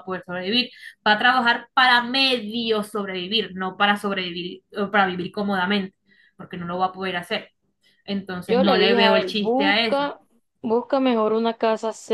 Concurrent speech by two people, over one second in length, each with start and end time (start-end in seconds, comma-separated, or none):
8.5-10.0